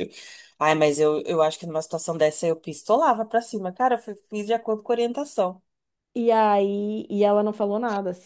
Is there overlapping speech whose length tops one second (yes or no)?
no